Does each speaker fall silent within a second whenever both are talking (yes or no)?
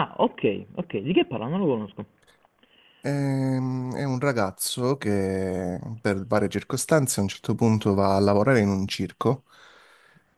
yes